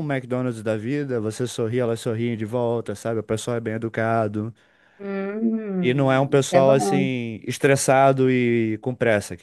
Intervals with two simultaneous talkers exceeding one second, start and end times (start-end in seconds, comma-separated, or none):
5.8-7.1